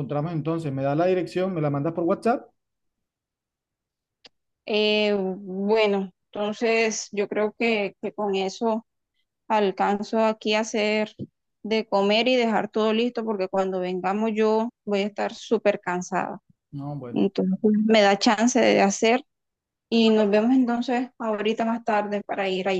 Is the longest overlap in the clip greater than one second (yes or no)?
no